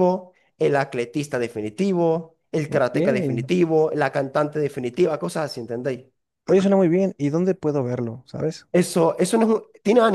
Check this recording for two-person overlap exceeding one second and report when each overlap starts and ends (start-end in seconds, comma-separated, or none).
none